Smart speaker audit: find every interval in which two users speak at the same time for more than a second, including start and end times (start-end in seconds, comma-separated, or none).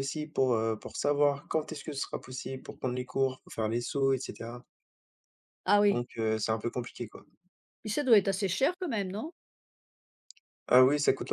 none